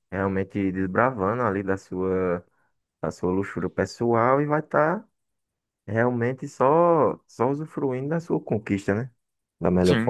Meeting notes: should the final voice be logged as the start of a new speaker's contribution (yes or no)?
yes